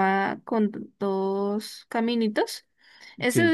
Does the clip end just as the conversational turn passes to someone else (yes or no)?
no